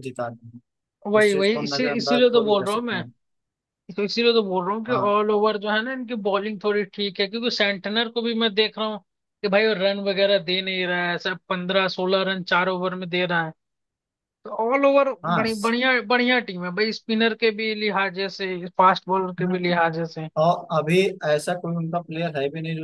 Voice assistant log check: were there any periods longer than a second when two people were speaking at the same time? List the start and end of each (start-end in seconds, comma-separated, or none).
1.2-3.0